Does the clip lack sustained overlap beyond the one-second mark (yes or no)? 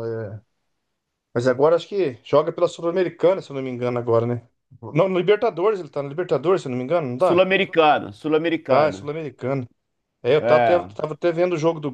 yes